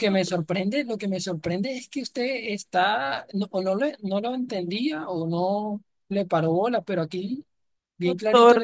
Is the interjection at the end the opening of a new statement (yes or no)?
yes